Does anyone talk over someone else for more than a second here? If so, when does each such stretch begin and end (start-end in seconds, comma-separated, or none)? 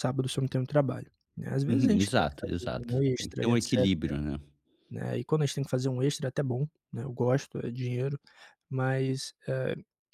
1.7-3.9